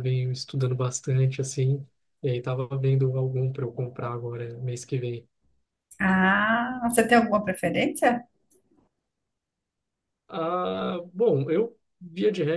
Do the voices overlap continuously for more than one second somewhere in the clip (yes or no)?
no